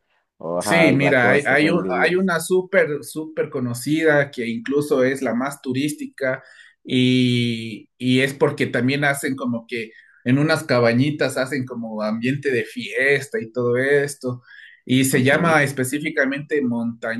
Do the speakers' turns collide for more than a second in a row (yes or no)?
yes